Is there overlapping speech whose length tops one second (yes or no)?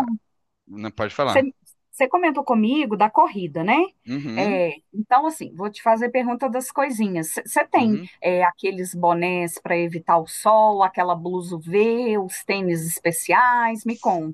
no